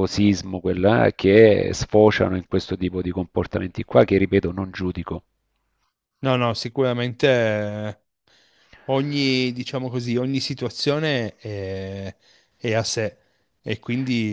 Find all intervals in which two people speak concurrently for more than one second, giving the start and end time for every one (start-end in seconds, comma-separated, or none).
none